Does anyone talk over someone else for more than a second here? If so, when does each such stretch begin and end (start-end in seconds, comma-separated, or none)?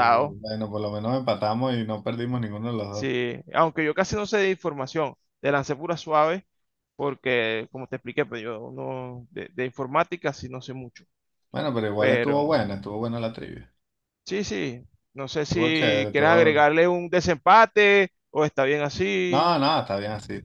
15.4-16.6